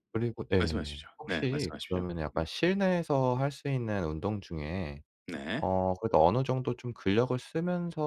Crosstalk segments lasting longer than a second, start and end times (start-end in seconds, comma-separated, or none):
0.6-2.4